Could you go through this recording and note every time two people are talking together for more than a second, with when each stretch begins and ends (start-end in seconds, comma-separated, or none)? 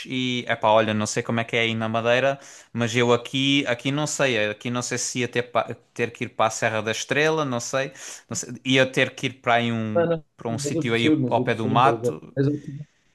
9.9-12.4